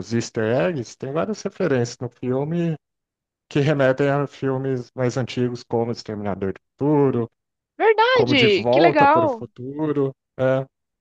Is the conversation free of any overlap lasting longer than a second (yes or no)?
no